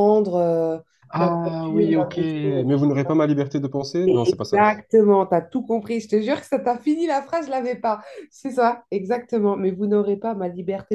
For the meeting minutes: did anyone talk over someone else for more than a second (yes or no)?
yes